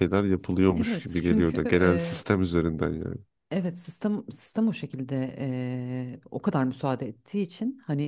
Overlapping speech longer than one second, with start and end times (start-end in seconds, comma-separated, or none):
0.7-2.2